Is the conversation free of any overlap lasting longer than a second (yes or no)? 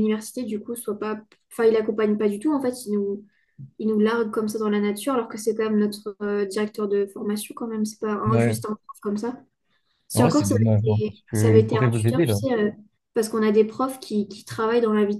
no